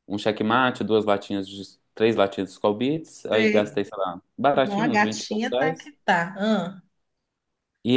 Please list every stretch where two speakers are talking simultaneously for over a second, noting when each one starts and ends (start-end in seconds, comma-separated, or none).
4.6-5.9